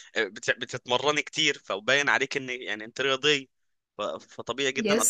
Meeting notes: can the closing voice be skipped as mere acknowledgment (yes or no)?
yes